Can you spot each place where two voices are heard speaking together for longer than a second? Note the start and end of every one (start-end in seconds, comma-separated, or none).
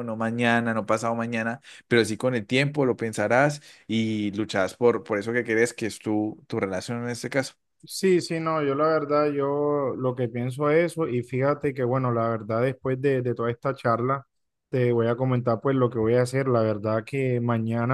none